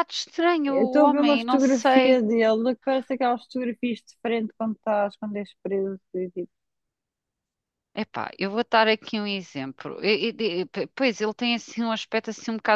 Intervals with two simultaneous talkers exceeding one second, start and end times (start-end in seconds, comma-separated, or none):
0.7-2.2